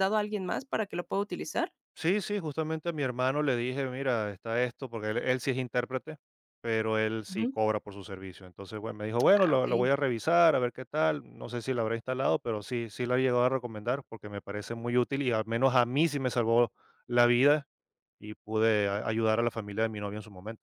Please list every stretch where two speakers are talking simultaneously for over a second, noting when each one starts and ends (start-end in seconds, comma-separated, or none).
none